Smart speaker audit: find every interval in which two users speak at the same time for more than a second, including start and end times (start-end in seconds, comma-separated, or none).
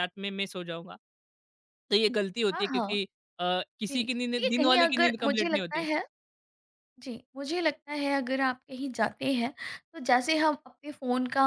3.9-5.9